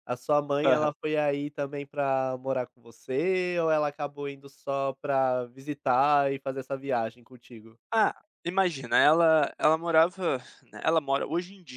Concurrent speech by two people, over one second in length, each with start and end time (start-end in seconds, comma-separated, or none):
none